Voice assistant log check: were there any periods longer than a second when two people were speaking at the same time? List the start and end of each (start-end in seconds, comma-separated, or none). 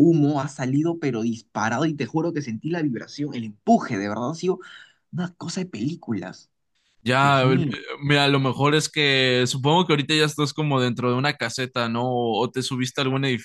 none